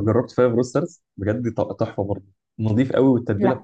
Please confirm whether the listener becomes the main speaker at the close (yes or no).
no